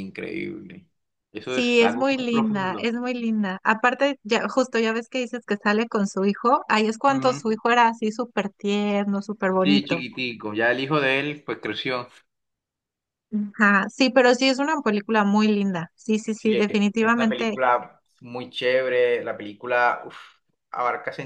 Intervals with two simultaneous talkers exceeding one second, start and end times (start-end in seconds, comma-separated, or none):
1.5-3.0, 16.4-17.6